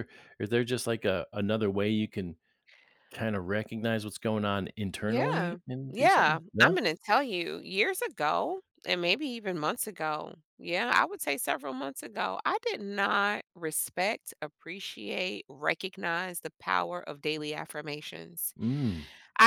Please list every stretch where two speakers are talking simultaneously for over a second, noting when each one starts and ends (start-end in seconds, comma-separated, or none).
5.1-6.7